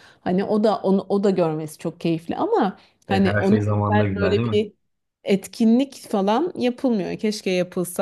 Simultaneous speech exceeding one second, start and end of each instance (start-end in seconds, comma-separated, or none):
3.1-4.7